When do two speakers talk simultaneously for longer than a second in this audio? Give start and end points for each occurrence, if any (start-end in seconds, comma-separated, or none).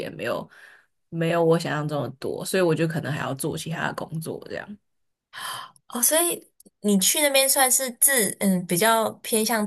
none